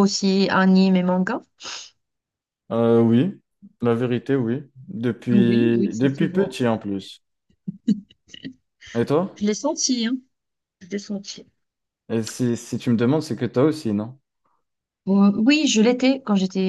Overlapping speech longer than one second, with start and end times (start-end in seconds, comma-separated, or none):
5.3-6.6